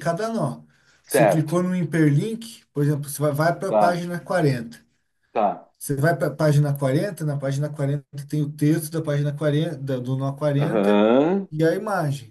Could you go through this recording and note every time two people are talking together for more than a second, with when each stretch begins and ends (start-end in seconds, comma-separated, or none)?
none